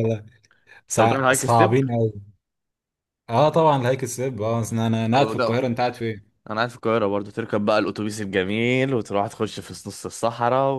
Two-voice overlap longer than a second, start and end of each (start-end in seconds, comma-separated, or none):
none